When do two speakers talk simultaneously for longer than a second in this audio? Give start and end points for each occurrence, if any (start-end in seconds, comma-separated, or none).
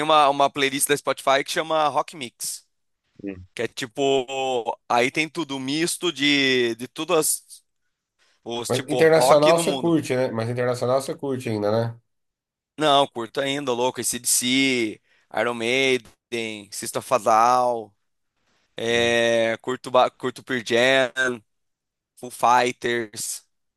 8.7-10.0